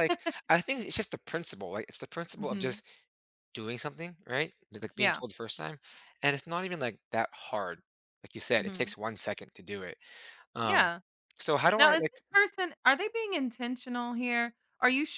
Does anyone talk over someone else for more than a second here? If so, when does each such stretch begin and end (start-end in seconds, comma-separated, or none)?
none